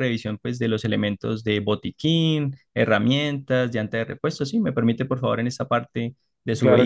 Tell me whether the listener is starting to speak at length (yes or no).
yes